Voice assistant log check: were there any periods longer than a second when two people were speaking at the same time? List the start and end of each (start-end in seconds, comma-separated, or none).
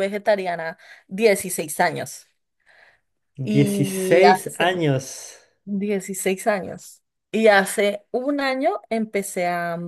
3.4-4.8